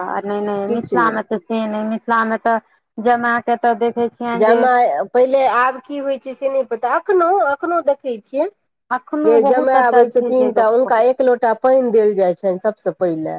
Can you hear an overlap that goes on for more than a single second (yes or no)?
yes